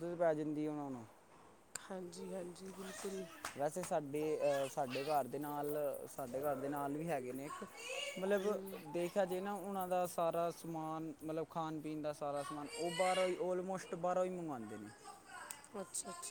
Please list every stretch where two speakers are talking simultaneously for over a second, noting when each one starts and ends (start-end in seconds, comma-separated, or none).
none